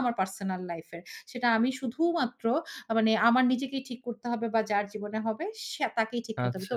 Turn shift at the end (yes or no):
no